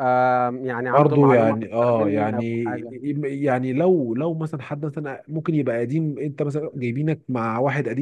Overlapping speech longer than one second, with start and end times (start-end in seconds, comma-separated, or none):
0.9-2.7